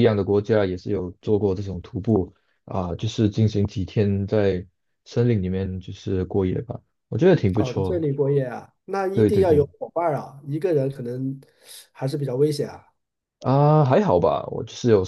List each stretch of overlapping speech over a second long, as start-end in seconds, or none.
none